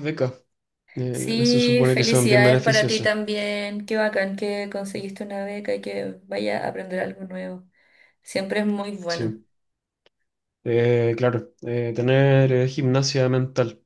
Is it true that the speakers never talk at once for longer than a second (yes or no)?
no